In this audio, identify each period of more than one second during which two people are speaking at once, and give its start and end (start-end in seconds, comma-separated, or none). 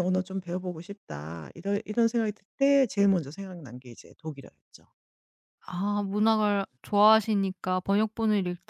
none